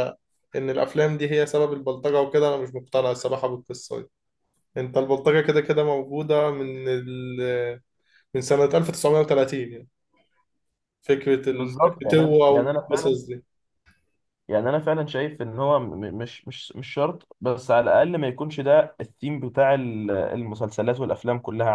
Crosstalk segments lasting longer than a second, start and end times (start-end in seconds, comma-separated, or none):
11.5-13.2